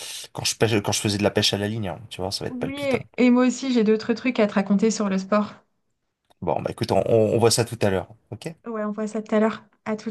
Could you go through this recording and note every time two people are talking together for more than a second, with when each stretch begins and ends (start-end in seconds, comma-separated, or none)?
none